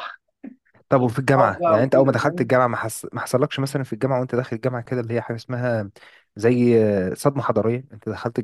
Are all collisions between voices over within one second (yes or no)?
no